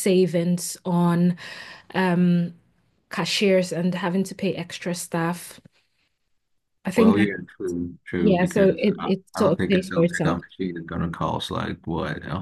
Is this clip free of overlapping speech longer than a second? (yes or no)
no